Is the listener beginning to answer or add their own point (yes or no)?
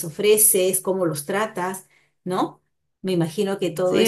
yes